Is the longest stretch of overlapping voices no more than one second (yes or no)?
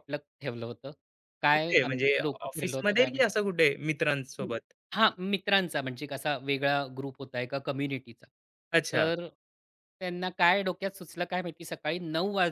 no